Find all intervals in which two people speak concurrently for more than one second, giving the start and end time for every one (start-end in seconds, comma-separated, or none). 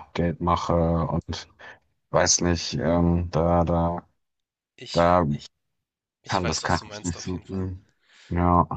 6.3-7.7